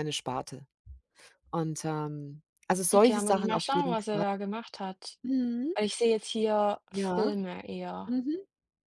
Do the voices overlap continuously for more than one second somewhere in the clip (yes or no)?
yes